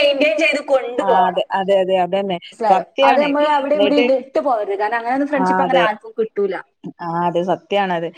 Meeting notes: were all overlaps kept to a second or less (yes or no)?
yes